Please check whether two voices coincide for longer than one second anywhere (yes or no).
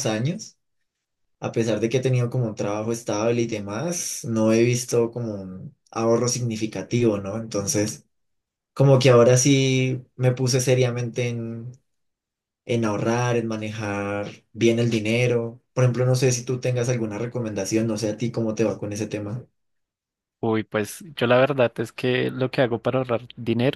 no